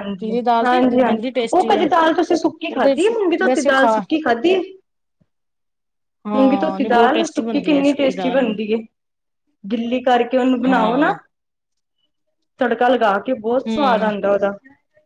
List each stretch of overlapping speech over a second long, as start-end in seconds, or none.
6.3-8.5